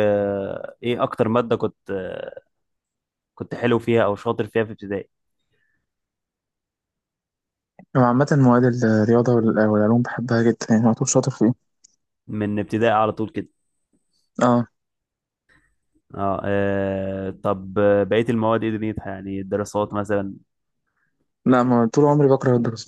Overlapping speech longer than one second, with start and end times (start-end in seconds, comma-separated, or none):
none